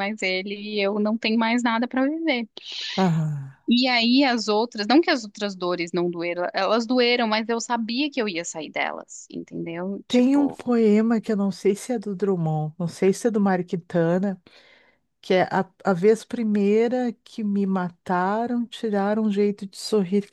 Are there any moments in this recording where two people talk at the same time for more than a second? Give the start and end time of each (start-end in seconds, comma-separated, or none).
none